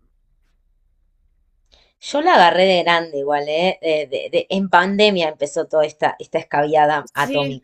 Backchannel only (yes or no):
no